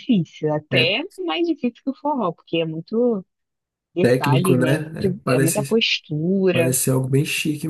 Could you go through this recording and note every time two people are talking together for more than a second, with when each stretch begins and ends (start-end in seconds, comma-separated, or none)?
4.0-5.8